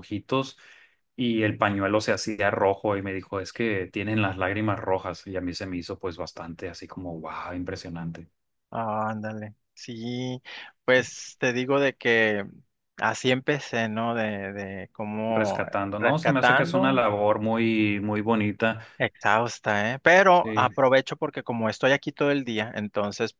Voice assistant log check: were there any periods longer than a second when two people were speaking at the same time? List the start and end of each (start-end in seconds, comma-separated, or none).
15.3-17.0